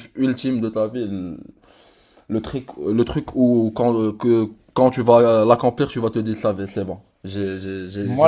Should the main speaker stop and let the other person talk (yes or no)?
yes